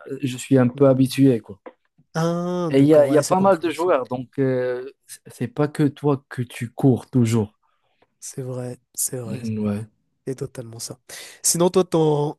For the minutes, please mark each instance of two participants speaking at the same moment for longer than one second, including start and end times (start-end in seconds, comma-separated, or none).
2.7-4.0